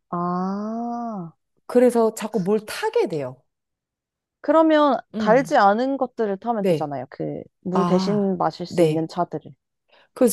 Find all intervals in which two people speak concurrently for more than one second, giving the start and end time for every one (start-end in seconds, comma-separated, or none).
7.7-9.1